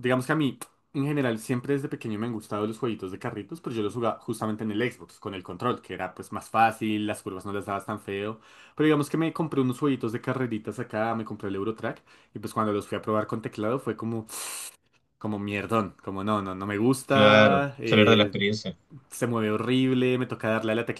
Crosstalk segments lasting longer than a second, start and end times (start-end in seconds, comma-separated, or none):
17.1-18.3